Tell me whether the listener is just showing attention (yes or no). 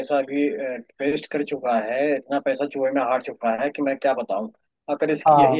yes